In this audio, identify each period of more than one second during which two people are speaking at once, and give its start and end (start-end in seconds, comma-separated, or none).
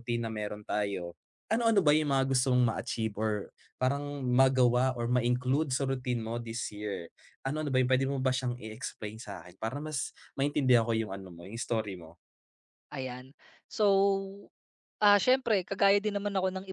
none